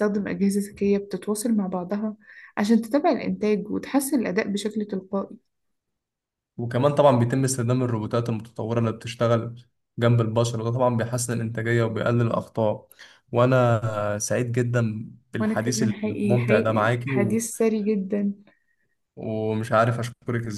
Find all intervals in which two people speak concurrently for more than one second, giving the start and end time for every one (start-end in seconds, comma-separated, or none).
15.4-17.4